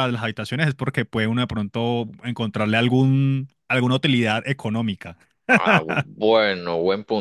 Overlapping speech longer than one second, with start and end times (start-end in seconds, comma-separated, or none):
none